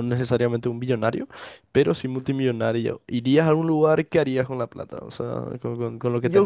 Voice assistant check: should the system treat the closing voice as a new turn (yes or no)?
yes